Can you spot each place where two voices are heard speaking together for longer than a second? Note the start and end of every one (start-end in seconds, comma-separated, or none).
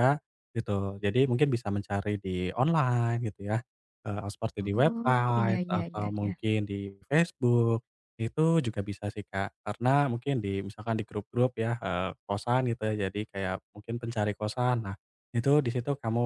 4.6-6.3